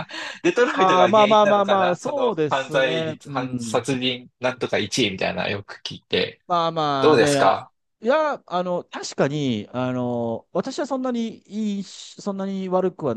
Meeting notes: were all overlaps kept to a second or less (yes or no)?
no